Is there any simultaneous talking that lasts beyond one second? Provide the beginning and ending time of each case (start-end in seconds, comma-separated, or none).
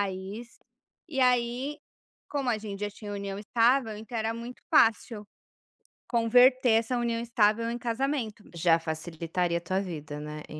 none